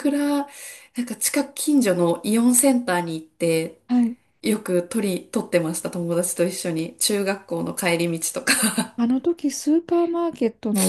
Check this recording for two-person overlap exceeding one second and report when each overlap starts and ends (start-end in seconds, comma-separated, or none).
none